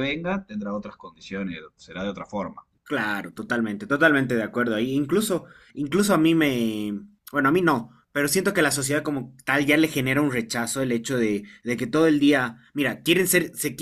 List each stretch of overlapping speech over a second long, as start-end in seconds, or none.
none